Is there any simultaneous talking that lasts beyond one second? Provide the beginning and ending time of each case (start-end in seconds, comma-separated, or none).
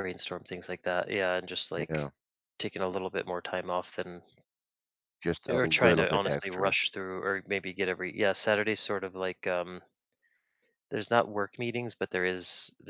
5.5-6.7